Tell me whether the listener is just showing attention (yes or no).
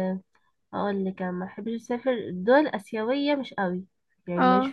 yes